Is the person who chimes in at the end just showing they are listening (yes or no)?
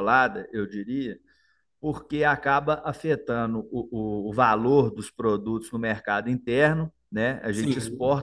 yes